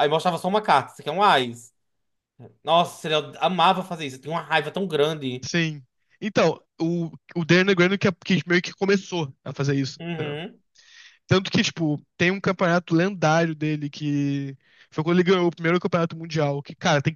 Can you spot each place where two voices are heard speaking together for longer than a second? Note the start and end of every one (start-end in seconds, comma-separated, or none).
none